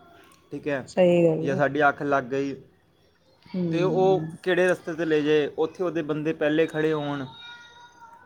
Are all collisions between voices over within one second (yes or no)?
yes